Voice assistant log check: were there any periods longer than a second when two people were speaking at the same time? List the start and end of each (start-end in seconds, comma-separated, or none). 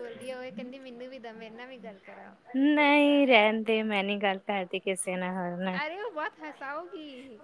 none